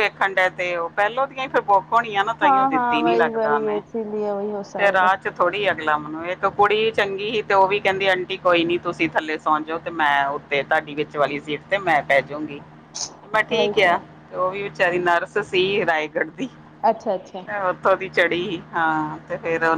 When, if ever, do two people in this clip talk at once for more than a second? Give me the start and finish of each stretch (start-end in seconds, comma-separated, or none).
none